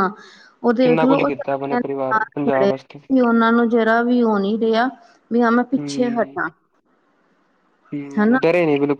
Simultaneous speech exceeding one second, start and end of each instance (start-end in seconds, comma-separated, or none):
0.8-2.7